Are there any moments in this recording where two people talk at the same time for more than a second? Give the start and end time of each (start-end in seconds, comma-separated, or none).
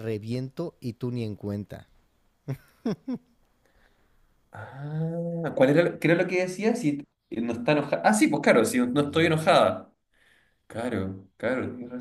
none